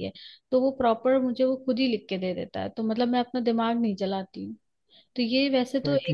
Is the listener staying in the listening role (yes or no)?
no